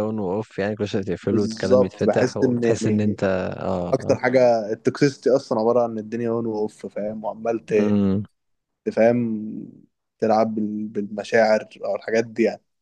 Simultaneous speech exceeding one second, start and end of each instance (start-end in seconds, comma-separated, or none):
1.3-3.2